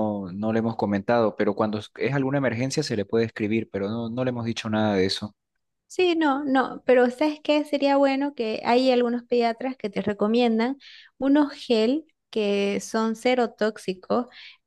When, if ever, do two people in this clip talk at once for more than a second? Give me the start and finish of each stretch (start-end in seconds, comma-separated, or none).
none